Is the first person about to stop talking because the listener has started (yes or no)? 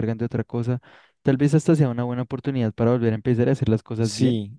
yes